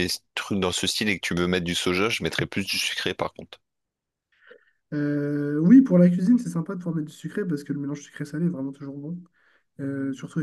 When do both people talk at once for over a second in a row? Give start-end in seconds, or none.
none